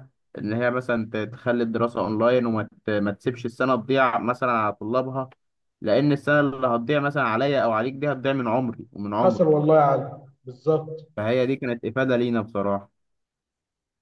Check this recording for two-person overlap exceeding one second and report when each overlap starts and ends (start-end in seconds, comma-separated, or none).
none